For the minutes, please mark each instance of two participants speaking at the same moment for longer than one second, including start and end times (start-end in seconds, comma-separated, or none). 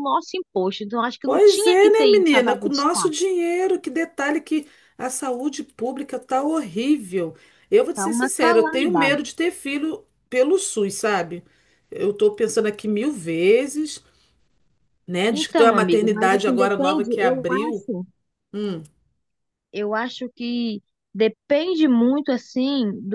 1.2-3.1, 7.9-9.2, 15.3-17.9